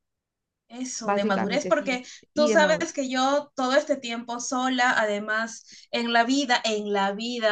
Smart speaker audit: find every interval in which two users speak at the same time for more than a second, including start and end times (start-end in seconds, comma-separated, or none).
1.0-3.0